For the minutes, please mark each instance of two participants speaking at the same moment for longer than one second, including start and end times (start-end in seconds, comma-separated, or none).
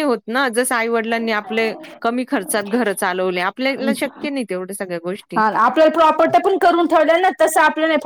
none